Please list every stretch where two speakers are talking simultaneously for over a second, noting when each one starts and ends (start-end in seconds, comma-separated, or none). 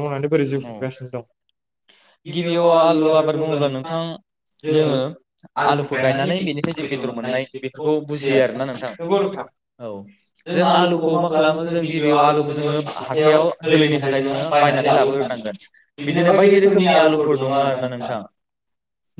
none